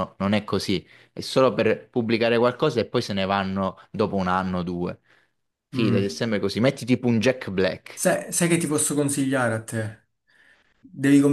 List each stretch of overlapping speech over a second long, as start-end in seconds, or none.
none